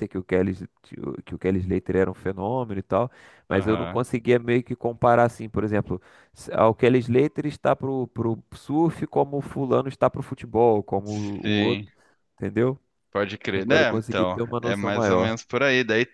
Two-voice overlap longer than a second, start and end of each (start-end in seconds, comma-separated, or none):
13.5-15.3